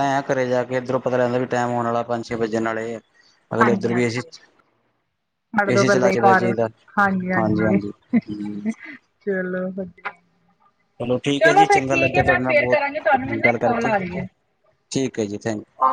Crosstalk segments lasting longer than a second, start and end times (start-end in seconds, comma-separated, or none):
11.4-12.8